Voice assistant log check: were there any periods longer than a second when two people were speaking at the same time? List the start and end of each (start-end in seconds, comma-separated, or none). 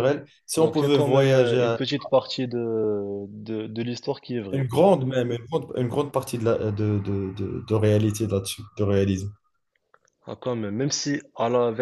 0.6-1.8